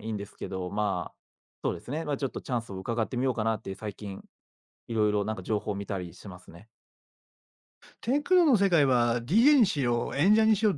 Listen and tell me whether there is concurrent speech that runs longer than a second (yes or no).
no